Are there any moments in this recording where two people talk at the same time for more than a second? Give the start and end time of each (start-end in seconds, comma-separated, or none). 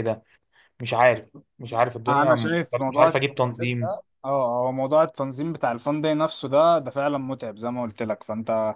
2.1-4.0